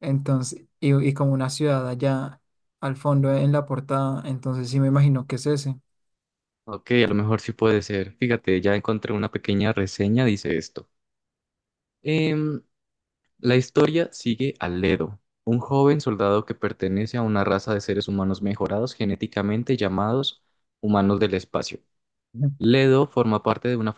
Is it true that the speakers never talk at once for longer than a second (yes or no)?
yes